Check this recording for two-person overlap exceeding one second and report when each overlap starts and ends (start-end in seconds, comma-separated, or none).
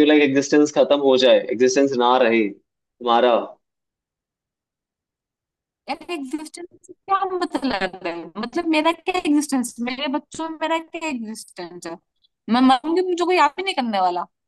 none